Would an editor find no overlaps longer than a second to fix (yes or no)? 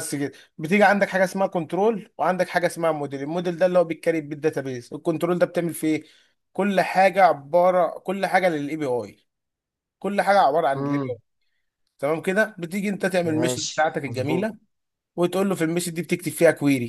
no